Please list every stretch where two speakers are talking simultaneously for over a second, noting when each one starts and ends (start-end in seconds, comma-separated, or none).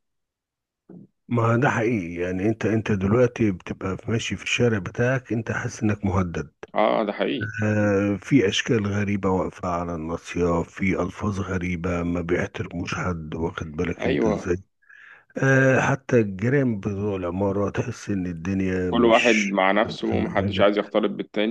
18.9-20.7